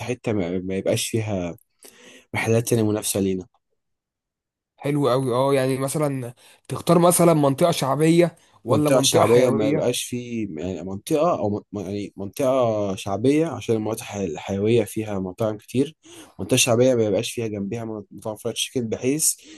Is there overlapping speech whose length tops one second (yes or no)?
yes